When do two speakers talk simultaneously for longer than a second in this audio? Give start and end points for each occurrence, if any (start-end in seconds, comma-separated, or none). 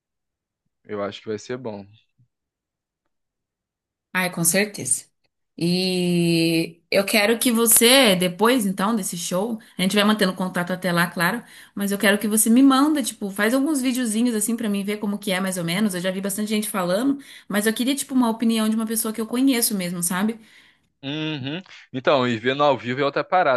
none